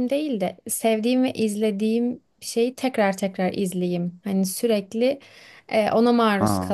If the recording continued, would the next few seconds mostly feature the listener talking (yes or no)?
no